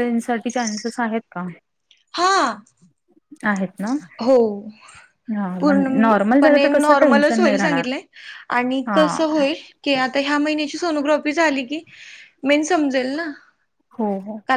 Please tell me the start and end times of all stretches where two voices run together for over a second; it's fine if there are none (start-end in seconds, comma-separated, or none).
5.6-7.9